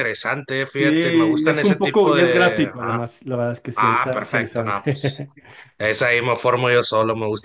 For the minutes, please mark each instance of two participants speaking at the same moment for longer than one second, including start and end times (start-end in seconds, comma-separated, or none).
0.7-3.0, 3.8-5.2